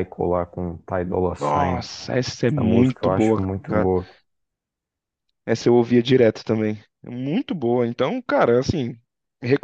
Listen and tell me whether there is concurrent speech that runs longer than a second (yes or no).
yes